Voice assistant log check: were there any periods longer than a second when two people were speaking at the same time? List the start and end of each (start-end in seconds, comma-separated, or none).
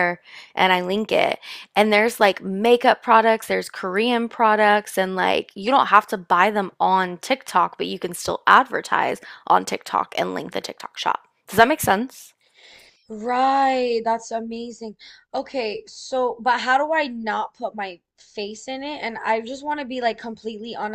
none